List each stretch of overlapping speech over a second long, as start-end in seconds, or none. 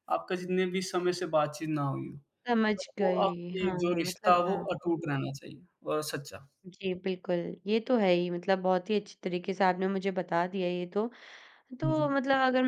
2.8-4.7